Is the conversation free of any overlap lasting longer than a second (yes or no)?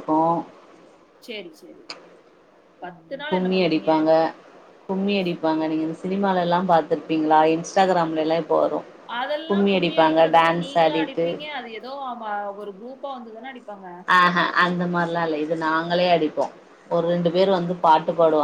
no